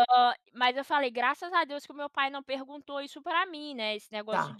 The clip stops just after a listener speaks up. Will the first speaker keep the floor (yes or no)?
yes